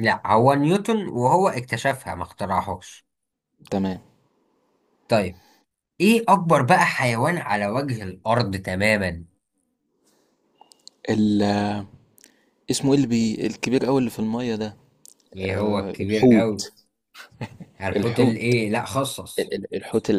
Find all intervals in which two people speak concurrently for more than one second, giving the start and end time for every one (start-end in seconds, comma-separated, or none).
15.4-16.7